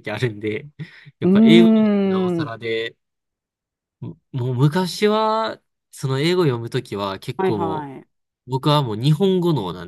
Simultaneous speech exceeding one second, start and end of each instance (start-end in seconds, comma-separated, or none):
1.2-2.5